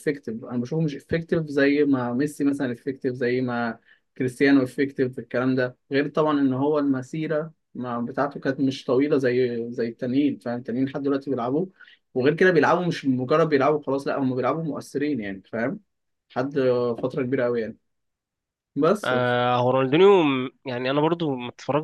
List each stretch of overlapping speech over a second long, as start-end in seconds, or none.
none